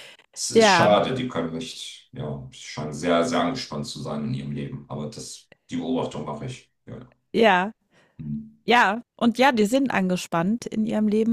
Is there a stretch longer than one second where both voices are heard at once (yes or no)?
no